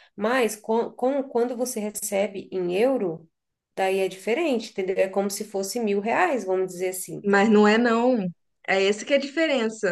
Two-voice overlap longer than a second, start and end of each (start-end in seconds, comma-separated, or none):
none